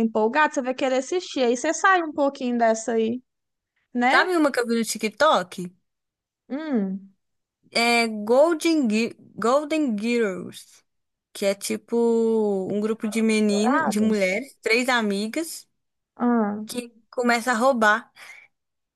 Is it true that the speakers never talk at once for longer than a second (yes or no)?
no